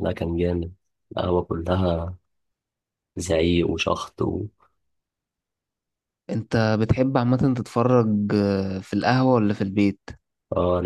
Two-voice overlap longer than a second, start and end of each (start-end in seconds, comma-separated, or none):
none